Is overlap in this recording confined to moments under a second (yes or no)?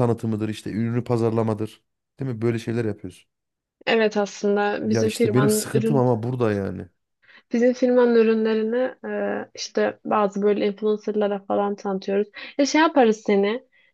no